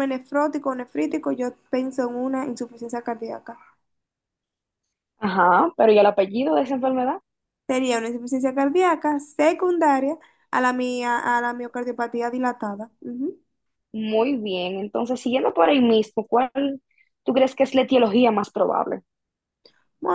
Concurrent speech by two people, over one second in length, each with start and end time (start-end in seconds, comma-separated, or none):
none